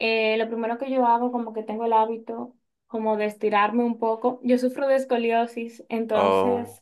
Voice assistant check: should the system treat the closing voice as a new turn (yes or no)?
no